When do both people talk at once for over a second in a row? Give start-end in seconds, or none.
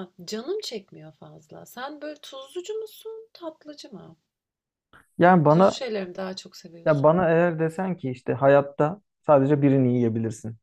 none